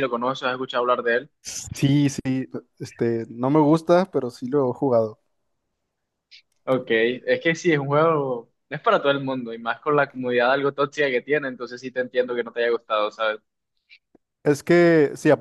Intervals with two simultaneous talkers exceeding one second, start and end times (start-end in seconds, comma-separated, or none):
none